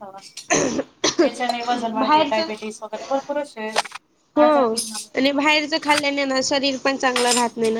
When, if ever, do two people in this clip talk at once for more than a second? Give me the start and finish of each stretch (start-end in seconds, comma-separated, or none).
none